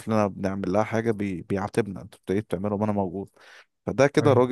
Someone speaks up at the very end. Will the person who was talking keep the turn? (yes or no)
yes